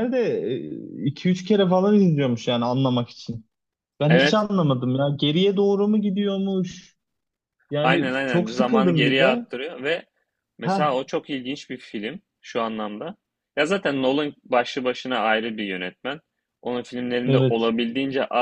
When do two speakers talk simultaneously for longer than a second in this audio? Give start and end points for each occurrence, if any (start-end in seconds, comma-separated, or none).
7.8-9.4